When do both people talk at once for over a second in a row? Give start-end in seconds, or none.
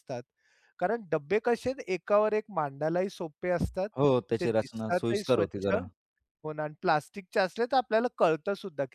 4.4-5.7